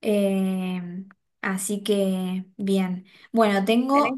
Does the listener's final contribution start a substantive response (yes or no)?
no